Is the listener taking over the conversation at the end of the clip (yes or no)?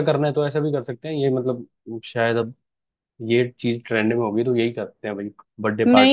yes